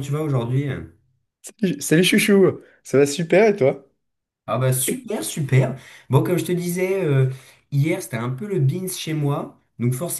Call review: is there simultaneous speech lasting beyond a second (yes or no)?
no